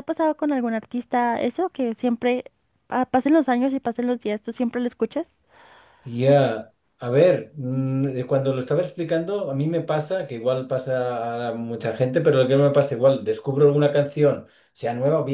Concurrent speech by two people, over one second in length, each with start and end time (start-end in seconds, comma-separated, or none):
none